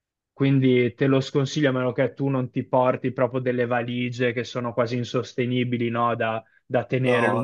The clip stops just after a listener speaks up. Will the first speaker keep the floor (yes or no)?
yes